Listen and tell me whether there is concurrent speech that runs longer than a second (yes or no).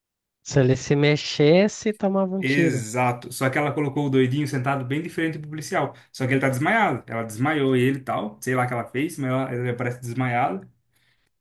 no